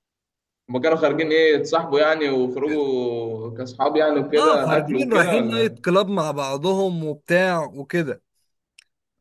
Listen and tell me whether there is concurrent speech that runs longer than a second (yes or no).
yes